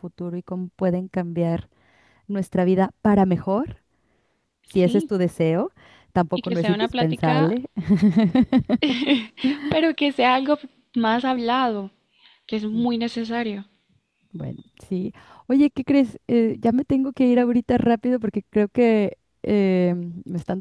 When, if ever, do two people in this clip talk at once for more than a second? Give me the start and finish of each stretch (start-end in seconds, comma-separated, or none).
6.3-7.5